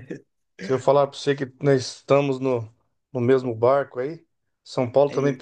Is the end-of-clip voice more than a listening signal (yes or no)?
no